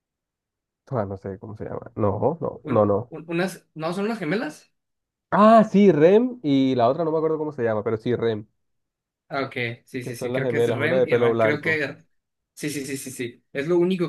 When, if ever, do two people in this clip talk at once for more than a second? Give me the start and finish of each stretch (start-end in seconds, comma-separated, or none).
10.0-11.8